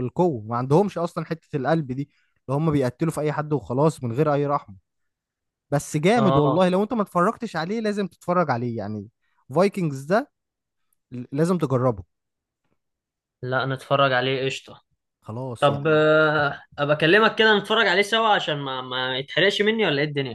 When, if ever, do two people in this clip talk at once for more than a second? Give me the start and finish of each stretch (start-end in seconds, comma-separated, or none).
none